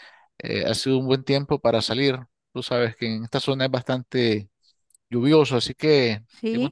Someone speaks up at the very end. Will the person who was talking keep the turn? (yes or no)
yes